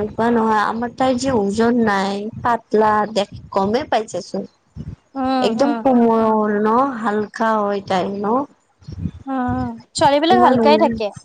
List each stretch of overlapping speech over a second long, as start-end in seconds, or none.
none